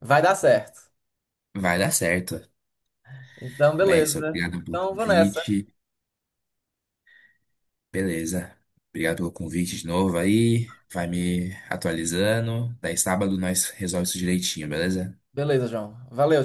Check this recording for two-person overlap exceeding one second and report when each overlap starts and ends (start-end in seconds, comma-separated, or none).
3.8-5.4